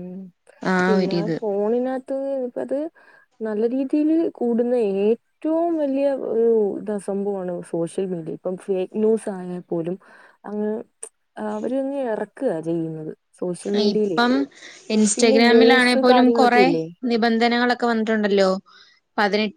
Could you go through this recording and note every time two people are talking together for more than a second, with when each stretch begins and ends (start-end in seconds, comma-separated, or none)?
none